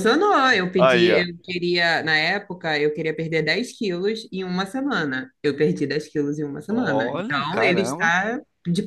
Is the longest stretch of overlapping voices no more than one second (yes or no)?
no